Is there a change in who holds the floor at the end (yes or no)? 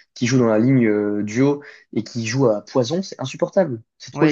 yes